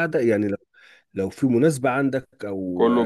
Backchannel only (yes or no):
yes